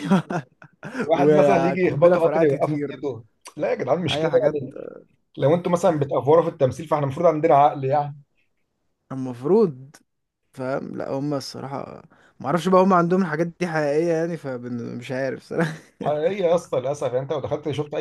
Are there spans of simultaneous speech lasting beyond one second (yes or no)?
yes